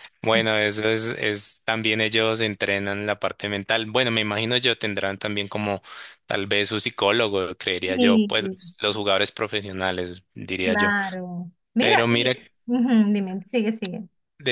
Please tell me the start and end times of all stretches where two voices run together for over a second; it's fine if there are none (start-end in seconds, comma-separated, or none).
none